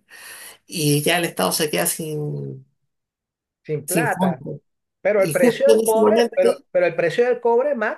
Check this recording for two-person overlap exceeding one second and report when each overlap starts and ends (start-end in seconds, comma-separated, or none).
5.2-6.5